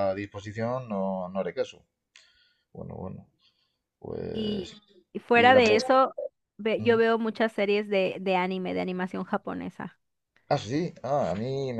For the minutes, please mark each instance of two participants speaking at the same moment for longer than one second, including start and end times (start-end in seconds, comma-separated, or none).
none